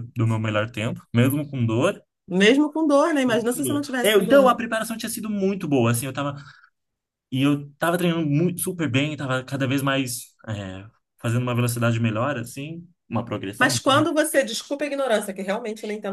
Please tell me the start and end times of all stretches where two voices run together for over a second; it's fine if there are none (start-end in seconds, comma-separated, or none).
3.3-4.6